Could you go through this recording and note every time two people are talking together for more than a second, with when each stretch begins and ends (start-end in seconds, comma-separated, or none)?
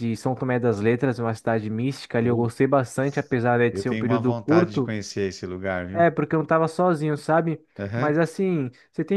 3.7-4.9